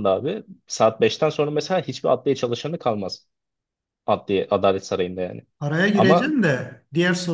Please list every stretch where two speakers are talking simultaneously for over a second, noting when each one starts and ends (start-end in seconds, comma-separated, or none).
none